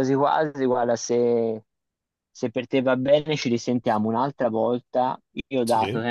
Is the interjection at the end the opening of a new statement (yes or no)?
no